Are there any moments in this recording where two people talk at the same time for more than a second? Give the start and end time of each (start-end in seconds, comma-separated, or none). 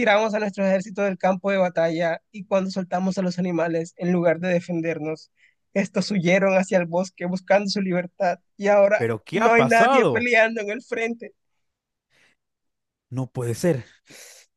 9.0-10.3